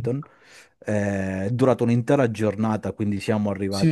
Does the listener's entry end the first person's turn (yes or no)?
yes